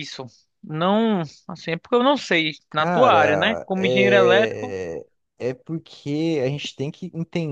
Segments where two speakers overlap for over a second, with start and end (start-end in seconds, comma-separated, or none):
2.7-4.8